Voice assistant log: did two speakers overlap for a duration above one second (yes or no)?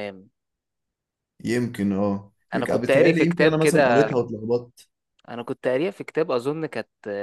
yes